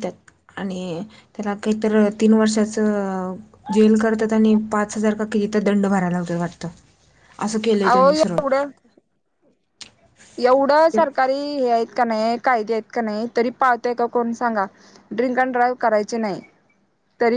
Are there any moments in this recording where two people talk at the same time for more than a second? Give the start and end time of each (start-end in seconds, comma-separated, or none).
none